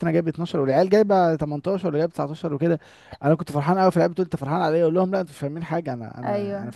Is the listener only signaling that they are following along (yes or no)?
yes